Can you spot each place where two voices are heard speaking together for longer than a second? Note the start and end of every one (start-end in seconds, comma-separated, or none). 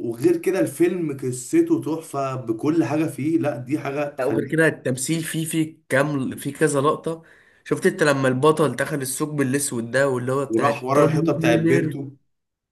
10.5-12.0